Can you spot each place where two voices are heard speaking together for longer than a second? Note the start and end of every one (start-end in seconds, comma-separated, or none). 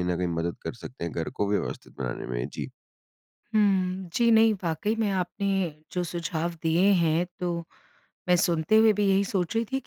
none